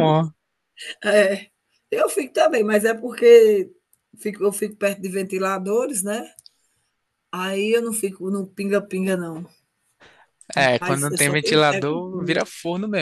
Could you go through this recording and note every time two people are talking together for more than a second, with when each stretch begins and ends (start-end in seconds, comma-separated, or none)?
10.8-12.4